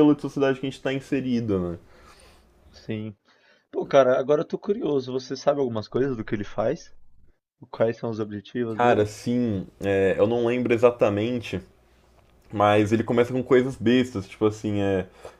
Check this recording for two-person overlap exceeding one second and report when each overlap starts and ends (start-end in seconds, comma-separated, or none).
none